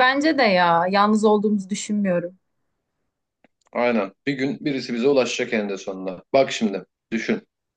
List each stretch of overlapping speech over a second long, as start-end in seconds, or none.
none